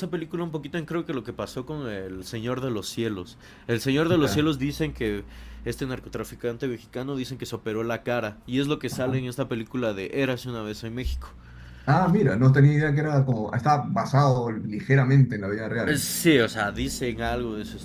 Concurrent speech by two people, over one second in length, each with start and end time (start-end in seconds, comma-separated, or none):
none